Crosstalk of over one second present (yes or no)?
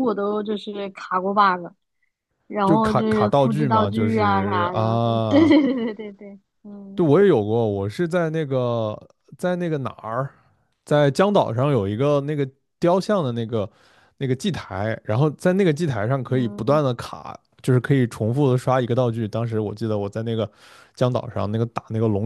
yes